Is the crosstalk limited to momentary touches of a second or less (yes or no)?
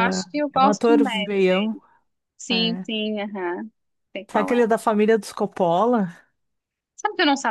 no